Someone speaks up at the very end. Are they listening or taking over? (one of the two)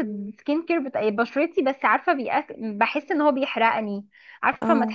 listening